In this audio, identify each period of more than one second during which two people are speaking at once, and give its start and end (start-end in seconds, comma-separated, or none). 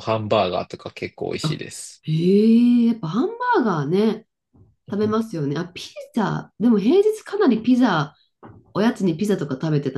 none